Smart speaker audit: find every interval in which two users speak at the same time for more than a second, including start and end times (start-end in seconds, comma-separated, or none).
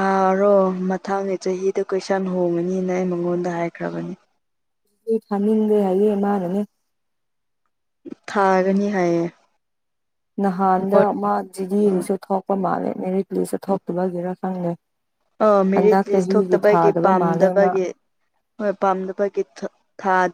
15.8-17.7